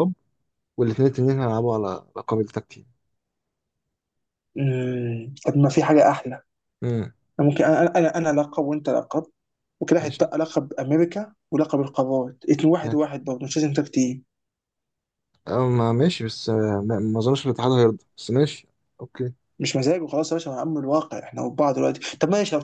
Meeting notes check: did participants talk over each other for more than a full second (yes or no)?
no